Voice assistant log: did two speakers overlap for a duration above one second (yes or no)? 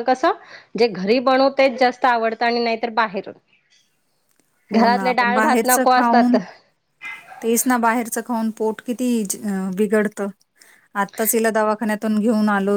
yes